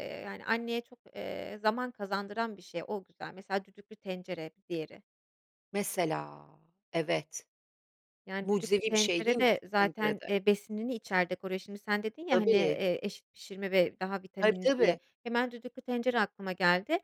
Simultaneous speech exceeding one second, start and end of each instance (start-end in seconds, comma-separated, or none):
8.4-10.3